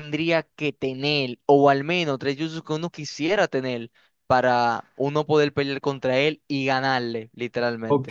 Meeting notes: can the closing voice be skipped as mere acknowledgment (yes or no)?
no